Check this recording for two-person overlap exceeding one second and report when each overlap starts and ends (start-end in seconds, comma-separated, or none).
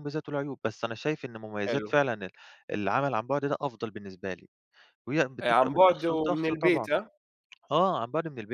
5.4-6.9